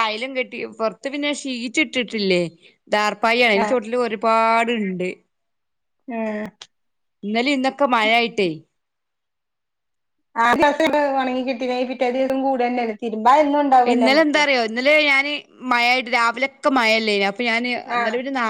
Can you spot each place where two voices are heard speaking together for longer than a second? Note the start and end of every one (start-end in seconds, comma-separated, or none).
none